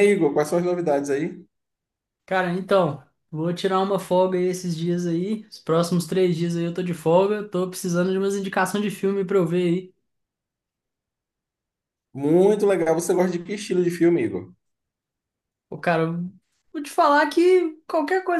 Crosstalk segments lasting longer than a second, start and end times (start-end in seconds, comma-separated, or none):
none